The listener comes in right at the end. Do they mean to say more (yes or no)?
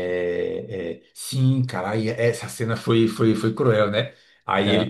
no